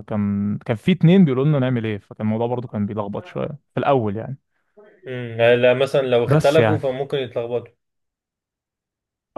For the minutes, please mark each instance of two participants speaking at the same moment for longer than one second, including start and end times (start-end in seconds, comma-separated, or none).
none